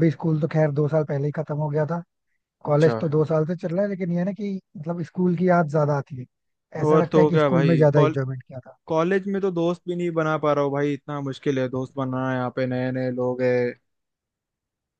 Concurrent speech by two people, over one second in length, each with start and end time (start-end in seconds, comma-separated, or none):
6.8-8.2